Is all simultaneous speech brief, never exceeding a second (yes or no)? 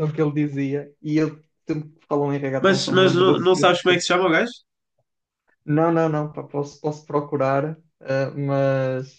no